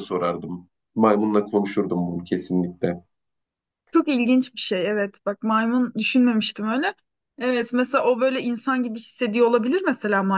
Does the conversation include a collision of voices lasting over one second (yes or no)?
no